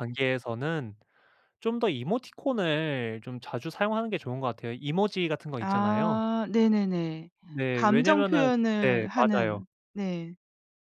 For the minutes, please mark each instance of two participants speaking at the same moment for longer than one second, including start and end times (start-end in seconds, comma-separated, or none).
7.7-9.6